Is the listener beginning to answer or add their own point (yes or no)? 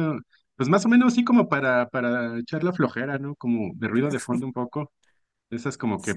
no